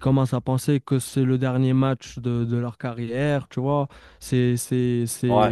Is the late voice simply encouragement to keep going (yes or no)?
yes